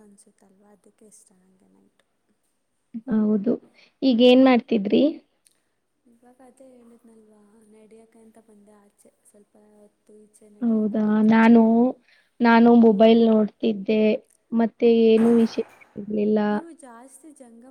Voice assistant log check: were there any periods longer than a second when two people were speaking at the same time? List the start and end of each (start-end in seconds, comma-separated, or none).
none